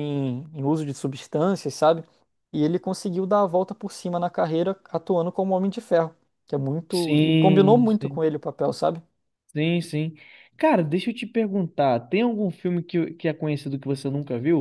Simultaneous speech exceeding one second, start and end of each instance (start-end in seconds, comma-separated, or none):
6.9-8.2